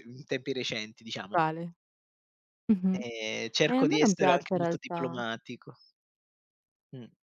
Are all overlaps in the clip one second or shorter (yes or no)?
no